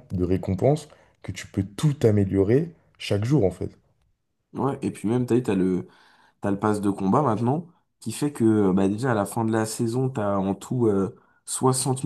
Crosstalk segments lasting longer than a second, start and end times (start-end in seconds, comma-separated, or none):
none